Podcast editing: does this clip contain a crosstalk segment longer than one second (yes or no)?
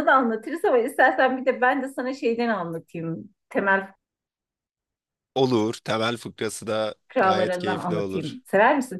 yes